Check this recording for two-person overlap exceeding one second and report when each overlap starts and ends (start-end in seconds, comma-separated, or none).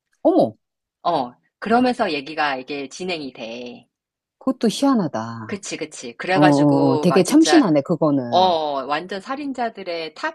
6.3-7.7